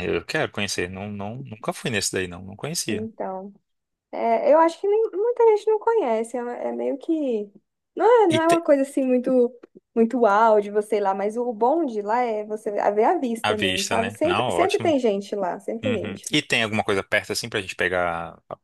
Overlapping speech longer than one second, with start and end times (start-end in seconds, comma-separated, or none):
13.4-14.9